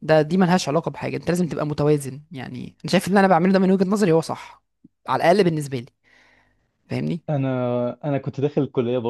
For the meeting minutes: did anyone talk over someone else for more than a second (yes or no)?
no